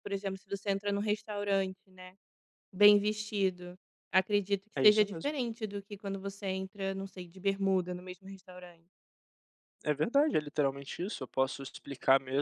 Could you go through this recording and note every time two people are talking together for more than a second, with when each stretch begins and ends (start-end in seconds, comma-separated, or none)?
none